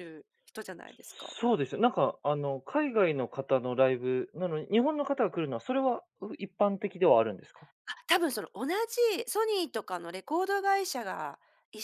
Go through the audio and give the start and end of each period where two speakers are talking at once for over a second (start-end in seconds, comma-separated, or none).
none